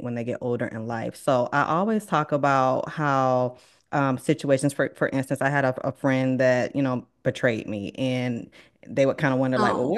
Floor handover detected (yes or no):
no